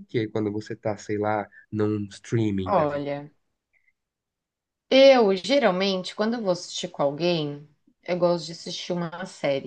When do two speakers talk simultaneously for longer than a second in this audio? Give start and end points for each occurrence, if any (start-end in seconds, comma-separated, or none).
none